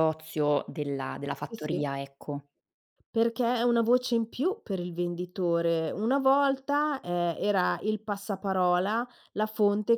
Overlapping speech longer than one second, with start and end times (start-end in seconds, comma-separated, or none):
none